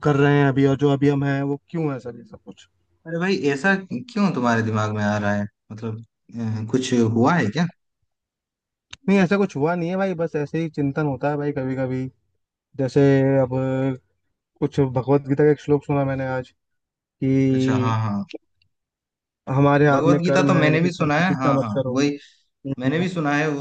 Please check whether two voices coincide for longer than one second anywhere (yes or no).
yes